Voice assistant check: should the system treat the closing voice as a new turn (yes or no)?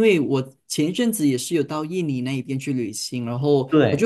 no